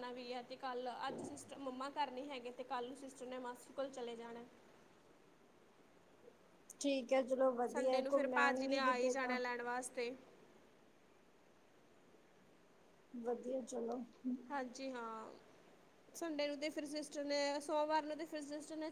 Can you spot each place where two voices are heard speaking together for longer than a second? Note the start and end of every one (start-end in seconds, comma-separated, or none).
7.7-9.4